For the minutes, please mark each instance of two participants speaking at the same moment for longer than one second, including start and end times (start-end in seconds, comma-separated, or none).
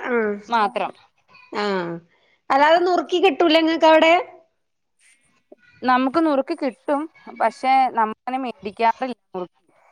none